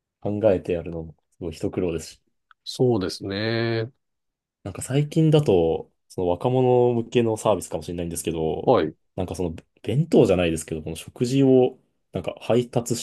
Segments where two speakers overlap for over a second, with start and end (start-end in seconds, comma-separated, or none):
none